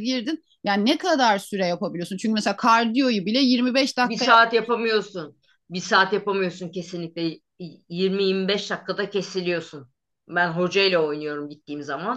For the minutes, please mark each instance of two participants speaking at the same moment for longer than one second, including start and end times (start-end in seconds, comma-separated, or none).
none